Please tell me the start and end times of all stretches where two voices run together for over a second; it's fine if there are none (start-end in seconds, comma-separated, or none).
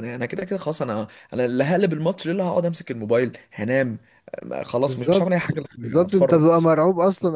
4.8-6.7